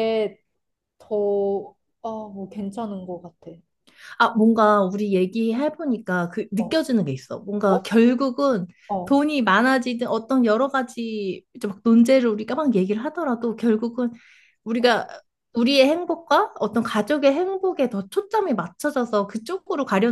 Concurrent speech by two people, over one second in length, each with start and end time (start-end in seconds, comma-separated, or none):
none